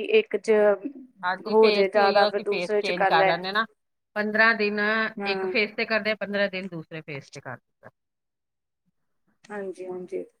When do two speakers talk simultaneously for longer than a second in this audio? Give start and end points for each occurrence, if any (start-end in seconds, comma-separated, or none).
1.5-3.3